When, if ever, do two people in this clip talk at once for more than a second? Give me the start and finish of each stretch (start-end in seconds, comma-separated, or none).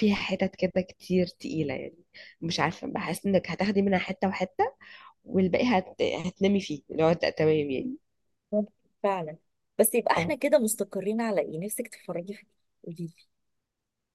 none